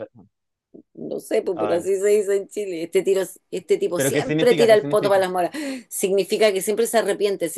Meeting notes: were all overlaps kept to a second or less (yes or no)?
no